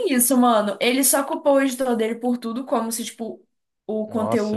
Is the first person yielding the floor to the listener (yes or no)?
no